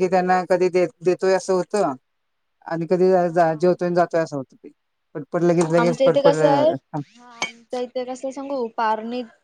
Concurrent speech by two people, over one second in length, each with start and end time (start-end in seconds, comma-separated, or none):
none